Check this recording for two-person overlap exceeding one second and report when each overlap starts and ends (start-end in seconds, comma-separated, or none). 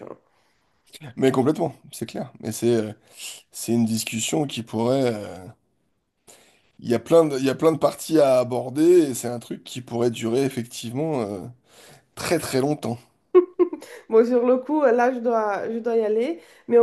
none